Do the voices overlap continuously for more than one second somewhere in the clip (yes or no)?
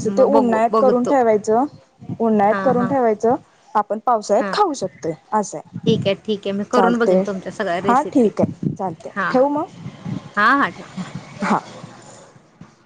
no